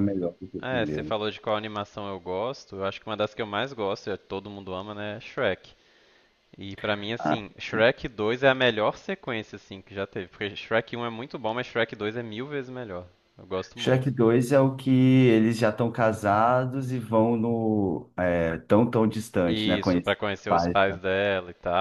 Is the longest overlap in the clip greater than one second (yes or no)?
yes